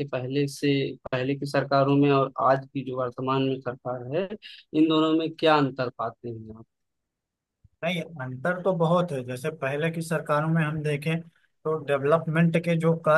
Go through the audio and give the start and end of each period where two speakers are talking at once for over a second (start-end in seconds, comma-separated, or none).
none